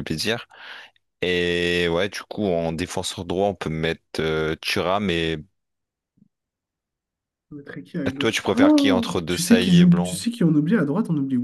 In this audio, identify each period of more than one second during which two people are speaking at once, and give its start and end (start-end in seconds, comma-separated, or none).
8.2-10.2